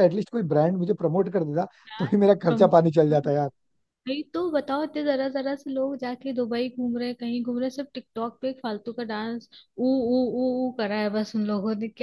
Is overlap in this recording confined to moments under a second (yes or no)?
yes